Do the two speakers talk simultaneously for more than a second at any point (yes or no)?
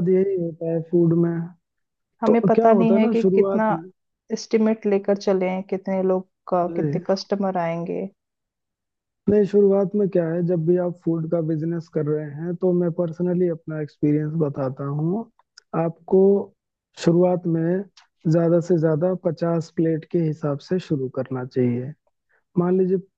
yes